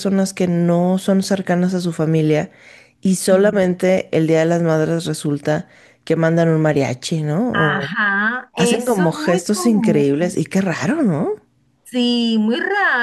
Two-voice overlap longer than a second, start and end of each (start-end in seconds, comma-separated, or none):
8.5-10.4